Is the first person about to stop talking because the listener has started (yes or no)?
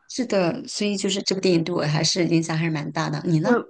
yes